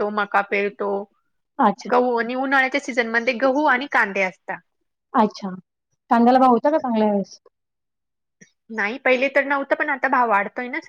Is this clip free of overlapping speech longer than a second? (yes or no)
yes